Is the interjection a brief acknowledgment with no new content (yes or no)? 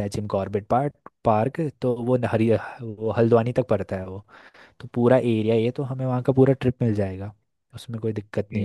no